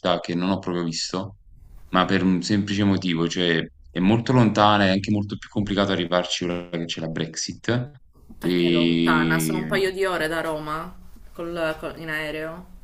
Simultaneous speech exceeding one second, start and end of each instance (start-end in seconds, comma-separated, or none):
8.4-9.8